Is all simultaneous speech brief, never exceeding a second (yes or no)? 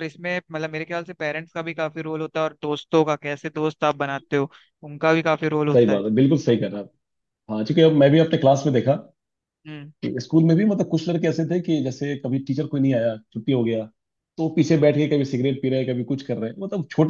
yes